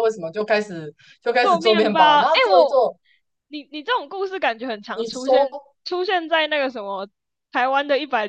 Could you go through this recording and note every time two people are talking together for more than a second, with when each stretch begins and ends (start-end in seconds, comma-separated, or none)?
1.4-2.8